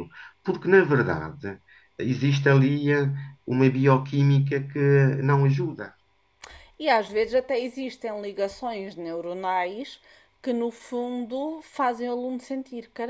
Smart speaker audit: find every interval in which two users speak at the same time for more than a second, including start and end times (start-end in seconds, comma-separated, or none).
none